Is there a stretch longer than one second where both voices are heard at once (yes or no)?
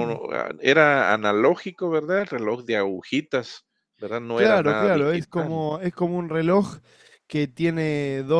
yes